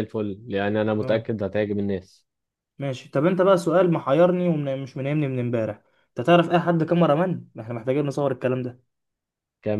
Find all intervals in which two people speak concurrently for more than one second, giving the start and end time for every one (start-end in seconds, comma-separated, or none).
none